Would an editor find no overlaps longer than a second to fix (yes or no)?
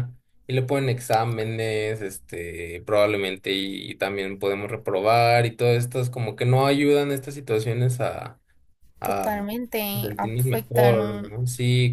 no